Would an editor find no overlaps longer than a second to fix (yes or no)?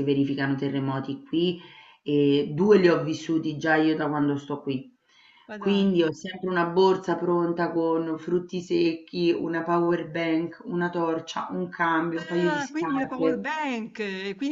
no